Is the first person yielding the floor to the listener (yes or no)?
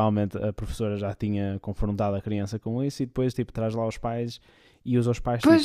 no